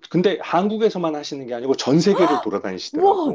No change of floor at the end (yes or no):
no